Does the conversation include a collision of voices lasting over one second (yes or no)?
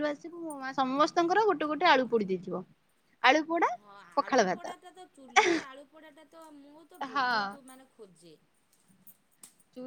no